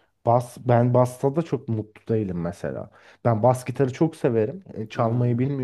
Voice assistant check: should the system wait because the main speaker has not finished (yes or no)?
yes